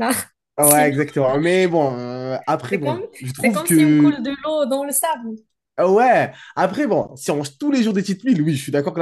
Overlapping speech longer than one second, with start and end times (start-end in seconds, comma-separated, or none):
2.7-4.2